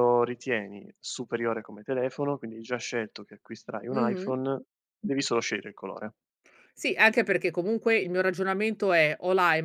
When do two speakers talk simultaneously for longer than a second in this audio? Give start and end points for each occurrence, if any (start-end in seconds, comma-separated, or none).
none